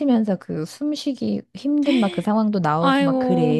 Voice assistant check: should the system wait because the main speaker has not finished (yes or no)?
no